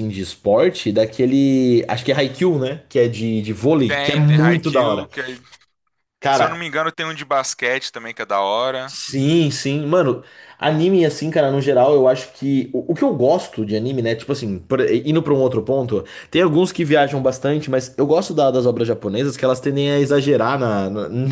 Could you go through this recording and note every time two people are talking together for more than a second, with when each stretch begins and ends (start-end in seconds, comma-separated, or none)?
3.9-5.1